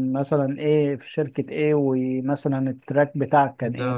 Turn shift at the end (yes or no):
yes